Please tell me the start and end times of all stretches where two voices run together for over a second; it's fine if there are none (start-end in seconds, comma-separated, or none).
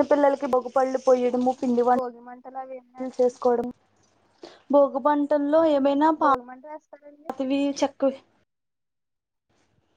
1.9-3.4